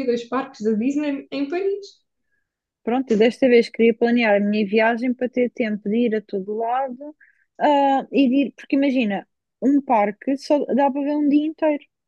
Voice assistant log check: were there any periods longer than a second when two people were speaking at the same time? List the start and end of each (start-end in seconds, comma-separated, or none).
none